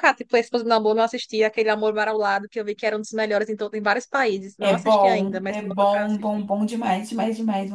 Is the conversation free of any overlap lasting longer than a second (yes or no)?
no